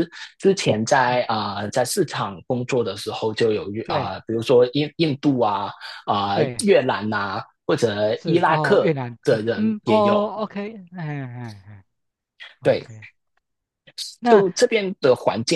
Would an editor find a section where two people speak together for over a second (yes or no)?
yes